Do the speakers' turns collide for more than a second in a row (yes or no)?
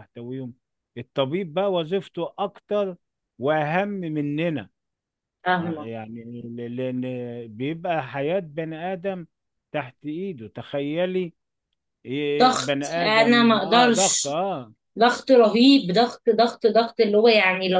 yes